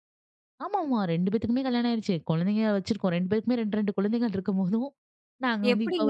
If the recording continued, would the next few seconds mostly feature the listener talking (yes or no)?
yes